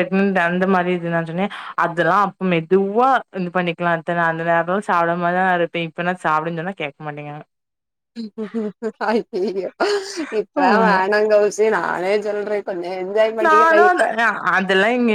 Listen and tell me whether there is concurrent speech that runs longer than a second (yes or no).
no